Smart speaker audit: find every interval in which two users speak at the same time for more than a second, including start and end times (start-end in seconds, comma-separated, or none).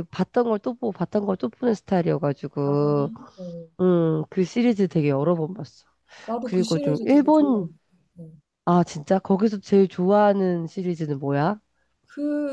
6.4-7.7